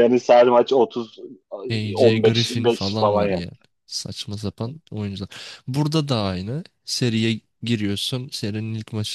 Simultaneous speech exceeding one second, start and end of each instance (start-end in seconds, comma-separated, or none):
2.0-3.5